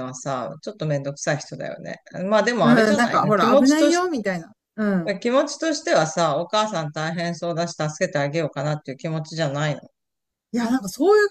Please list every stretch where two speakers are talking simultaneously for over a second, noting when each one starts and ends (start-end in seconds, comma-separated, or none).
2.6-4.1